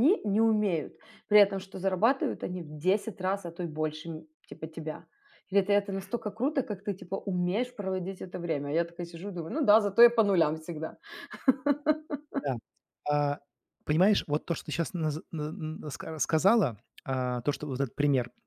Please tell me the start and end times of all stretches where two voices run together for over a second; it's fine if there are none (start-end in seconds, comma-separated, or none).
none